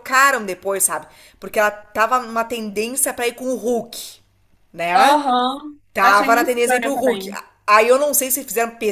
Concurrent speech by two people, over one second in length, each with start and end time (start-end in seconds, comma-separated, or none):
5.9-7.3